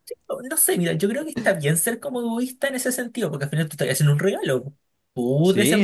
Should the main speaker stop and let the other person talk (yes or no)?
no